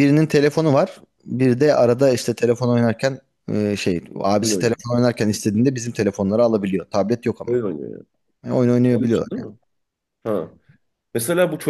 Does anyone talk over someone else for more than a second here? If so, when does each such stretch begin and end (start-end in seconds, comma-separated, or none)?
none